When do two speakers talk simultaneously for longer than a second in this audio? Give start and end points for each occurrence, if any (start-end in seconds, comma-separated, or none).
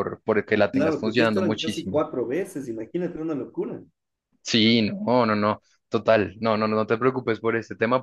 0.7-2.0